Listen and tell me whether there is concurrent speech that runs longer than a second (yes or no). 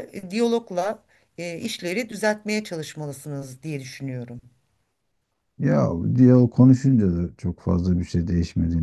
no